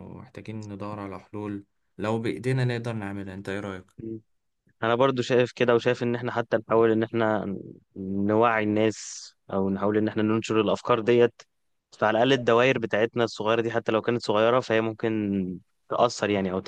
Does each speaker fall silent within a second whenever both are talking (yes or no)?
yes